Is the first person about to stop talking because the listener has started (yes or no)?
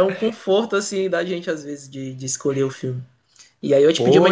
yes